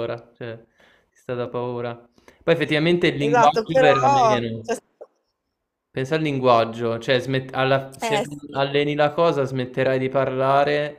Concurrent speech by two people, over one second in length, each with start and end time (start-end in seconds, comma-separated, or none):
3.2-4.8